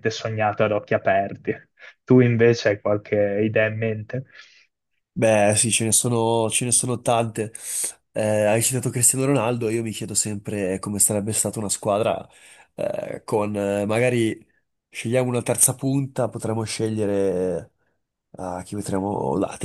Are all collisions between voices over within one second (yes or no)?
yes